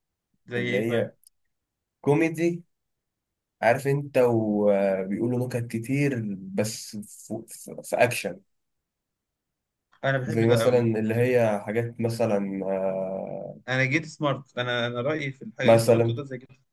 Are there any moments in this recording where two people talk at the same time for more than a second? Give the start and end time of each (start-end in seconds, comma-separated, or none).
none